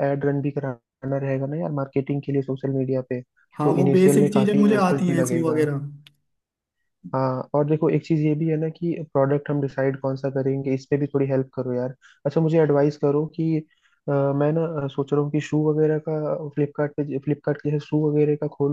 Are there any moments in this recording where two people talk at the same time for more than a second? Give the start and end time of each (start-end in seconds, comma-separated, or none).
3.6-5.6